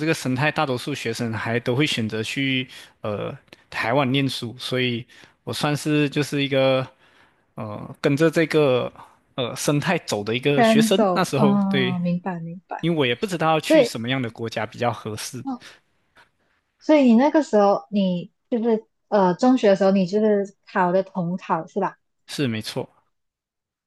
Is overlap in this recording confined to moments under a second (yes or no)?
no